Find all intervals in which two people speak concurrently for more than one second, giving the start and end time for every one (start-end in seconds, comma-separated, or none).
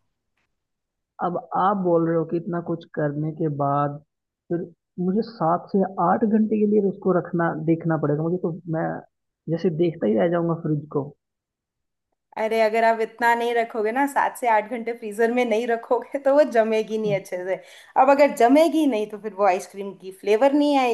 none